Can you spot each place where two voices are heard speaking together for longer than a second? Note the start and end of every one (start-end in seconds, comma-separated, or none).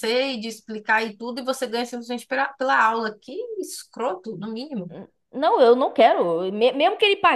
none